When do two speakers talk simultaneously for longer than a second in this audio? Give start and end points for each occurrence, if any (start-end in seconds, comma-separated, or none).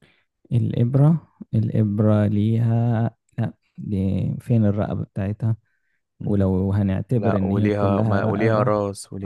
7.2-8.7